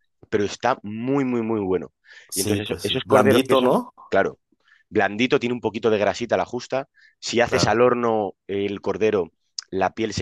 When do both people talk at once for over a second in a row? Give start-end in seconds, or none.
2.3-3.9